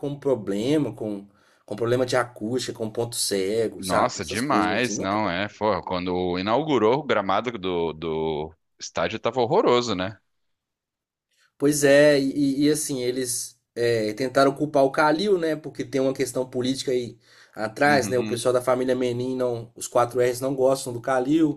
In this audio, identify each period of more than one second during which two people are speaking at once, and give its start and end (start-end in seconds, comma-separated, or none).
3.8-5.3